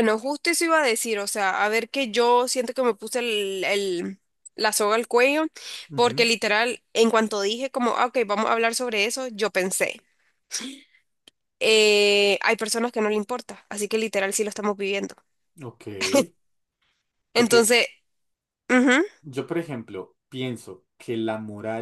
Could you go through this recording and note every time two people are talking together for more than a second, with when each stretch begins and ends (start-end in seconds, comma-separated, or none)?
none